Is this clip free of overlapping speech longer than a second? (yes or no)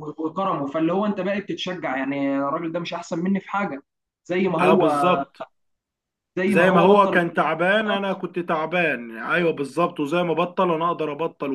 no